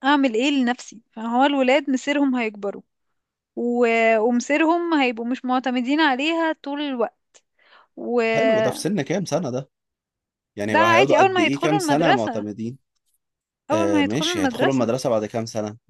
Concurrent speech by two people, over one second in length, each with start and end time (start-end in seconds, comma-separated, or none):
10.8-12.4, 13.7-14.9